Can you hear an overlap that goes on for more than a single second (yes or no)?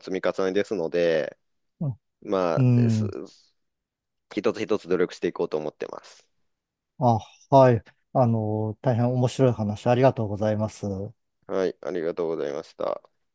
no